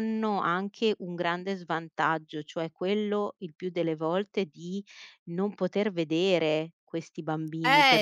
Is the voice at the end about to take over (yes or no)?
yes